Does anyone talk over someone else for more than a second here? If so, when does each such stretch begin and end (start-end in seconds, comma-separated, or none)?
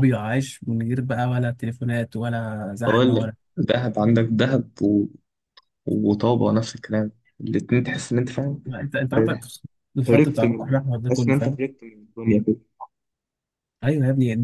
10.1-11.6